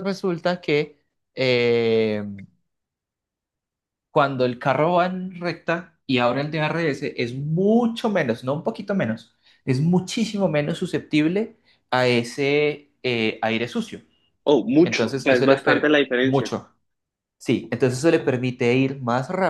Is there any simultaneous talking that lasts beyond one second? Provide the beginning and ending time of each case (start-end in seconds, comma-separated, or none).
14.8-16.5